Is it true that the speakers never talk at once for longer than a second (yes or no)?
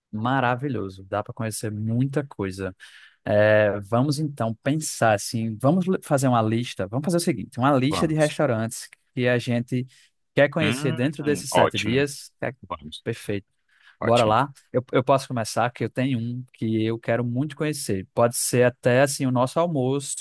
no